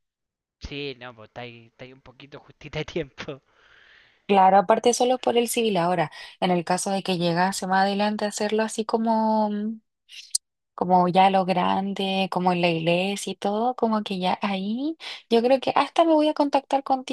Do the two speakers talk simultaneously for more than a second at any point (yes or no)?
no